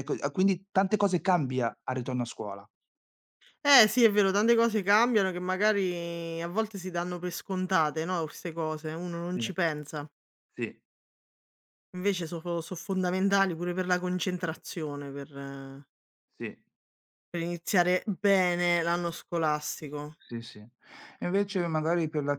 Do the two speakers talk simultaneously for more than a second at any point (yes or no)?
no